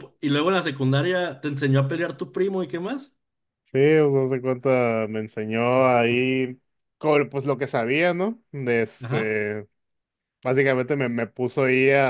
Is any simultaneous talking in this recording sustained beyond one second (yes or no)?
no